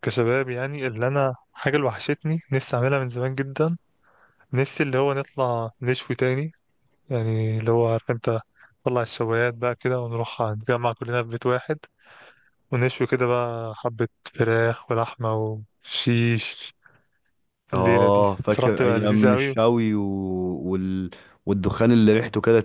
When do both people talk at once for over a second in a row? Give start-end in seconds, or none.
17.7-19.6